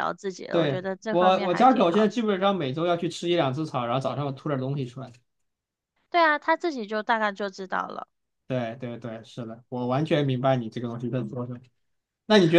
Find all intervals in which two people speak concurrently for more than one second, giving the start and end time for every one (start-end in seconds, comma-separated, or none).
0.5-2.1